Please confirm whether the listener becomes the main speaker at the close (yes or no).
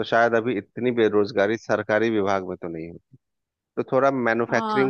yes